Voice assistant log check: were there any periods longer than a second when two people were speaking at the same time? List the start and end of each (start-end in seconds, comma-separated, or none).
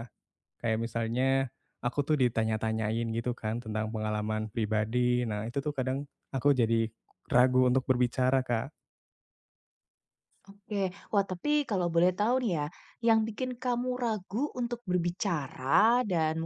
none